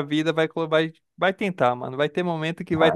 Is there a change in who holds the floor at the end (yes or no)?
no